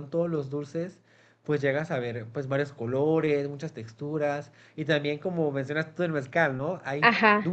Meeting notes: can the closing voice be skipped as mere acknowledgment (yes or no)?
yes